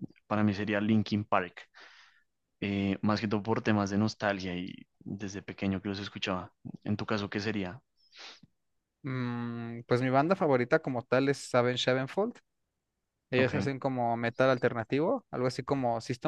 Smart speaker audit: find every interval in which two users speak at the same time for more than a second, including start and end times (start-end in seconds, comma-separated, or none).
none